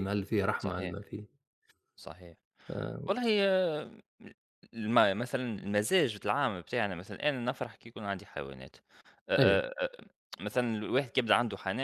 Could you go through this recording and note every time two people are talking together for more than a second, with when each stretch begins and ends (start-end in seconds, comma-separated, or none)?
none